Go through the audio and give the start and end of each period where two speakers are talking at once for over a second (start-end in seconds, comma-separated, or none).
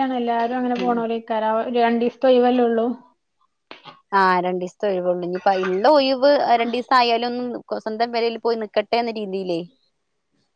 none